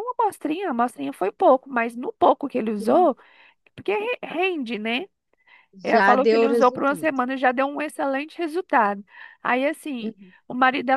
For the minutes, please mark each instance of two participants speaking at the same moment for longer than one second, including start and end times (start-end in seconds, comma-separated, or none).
5.9-7.1